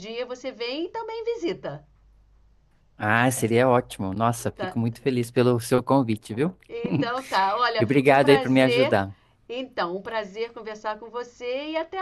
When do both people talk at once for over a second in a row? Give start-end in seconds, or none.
7.8-9.0